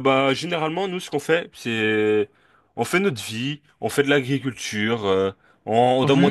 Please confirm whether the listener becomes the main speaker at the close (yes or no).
no